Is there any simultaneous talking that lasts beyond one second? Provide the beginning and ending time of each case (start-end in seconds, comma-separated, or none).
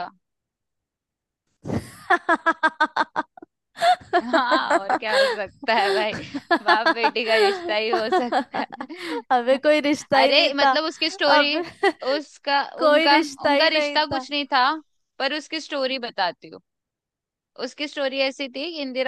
12.8-14.3